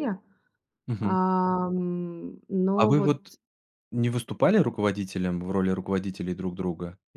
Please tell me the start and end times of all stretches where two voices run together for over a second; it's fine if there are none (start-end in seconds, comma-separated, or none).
none